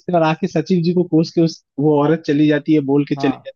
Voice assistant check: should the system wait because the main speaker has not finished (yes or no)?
yes